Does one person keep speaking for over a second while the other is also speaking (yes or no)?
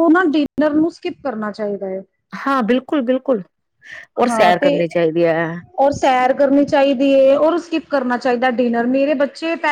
no